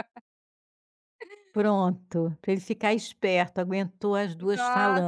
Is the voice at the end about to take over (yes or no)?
yes